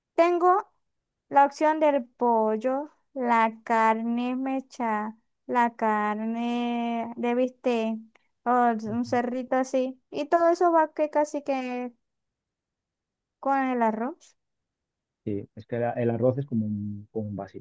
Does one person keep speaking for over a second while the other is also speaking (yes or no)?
no